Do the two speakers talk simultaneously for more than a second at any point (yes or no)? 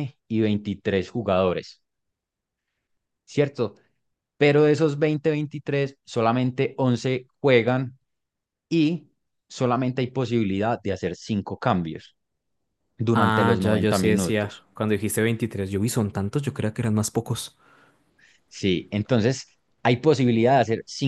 yes